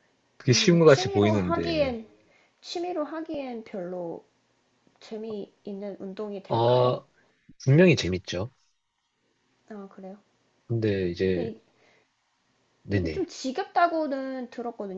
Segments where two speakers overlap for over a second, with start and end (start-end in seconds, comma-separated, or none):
0.5-1.9